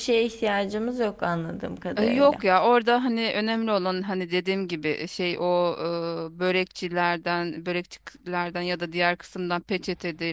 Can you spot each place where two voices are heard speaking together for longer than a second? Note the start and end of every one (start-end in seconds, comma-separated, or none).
none